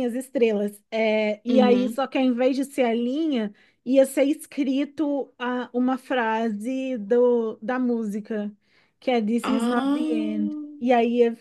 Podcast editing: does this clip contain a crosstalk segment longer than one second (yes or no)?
yes